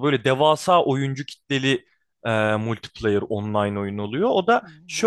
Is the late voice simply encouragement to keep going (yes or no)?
yes